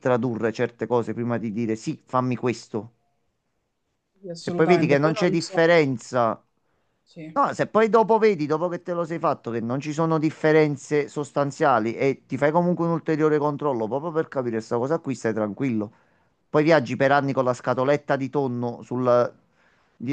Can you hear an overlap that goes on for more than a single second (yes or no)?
yes